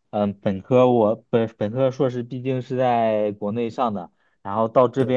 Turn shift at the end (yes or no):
no